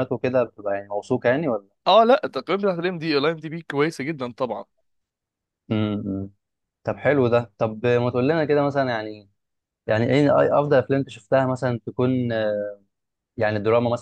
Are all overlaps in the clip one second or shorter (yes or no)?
yes